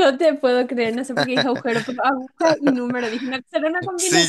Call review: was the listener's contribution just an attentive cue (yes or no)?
no